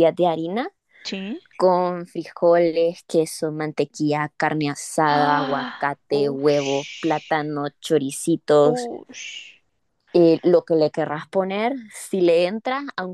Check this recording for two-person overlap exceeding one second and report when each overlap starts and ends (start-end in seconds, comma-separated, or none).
5.0-7.3